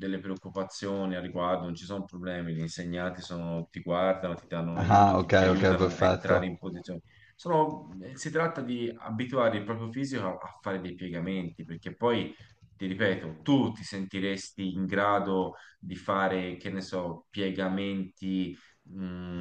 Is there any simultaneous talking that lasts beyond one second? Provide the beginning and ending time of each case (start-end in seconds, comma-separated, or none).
4.8-6.5